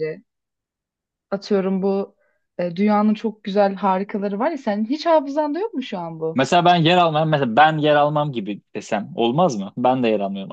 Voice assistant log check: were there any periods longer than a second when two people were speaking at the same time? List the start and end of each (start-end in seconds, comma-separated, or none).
none